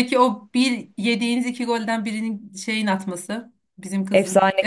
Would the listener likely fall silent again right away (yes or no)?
no